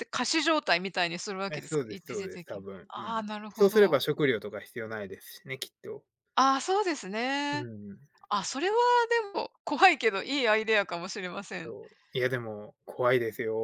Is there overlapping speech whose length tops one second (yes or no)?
yes